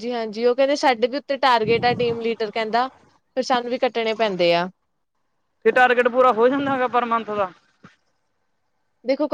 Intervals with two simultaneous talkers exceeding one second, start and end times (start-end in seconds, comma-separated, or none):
none